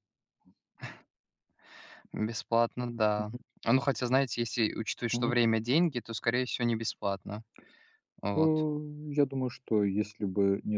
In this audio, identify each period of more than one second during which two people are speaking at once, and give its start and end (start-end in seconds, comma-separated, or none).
none